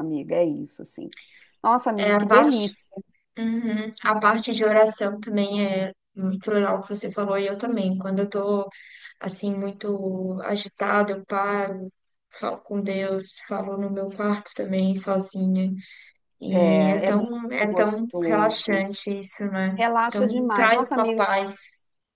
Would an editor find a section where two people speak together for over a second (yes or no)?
yes